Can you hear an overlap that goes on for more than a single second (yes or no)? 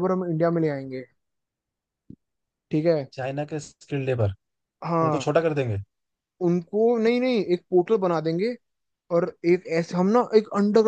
no